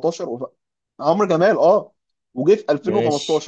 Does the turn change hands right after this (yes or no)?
no